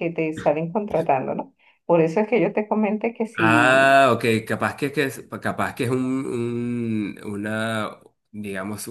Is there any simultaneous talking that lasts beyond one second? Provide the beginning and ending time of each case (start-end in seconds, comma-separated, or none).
none